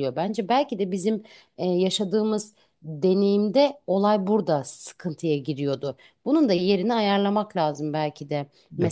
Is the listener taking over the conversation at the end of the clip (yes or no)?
yes